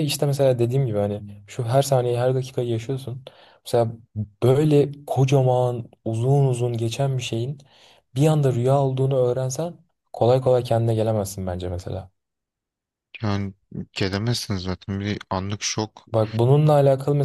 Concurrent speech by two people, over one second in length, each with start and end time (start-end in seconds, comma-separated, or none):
none